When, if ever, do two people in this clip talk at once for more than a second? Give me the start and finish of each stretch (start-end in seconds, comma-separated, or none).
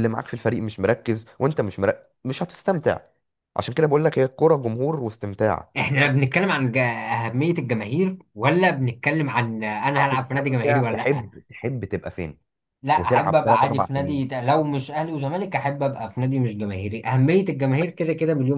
10.0-11.3, 12.9-14.2